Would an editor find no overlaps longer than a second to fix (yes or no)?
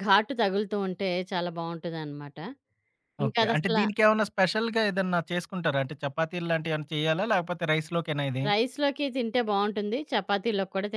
yes